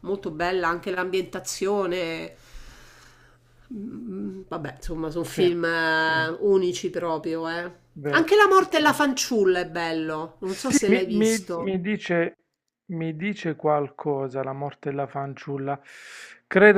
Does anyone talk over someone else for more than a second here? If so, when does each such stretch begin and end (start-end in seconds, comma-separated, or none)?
10.4-11.7